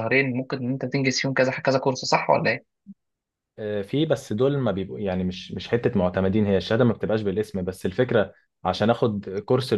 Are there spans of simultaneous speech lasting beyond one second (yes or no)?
no